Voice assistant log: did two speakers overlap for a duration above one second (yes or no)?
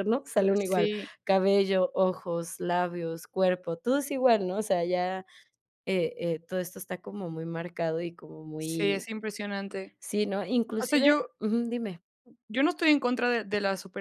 no